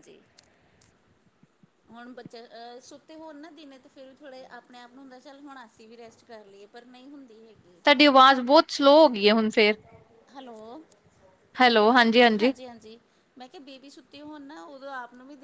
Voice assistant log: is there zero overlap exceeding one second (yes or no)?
yes